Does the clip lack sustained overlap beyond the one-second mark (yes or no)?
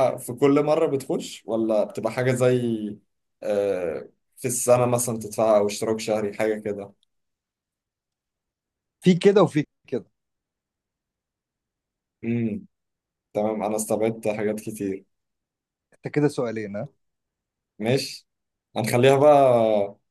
yes